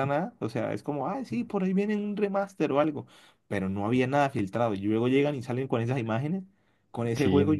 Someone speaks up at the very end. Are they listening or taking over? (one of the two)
listening